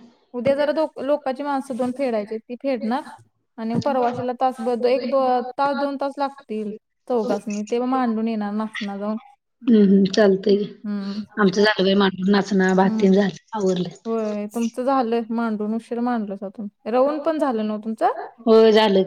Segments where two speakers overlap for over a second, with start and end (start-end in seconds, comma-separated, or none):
none